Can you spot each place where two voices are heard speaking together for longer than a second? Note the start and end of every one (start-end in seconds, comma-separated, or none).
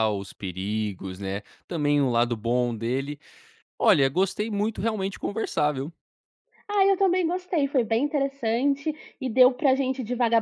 none